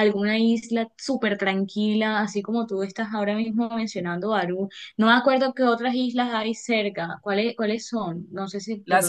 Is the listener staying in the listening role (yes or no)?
no